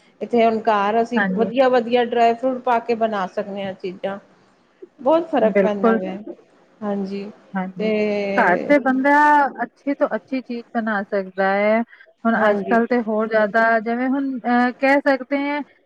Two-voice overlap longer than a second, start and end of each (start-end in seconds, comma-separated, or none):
none